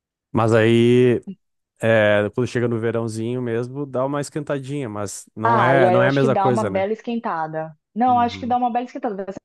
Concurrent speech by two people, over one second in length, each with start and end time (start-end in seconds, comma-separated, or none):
5.4-6.9